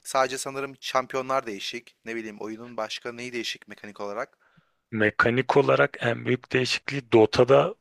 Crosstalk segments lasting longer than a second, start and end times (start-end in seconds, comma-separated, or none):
none